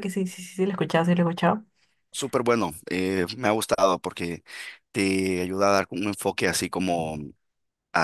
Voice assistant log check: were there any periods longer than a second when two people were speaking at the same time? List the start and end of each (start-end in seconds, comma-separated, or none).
none